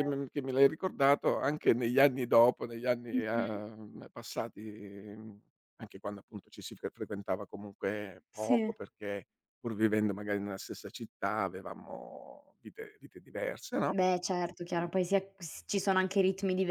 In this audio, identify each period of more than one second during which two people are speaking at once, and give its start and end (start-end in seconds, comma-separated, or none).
none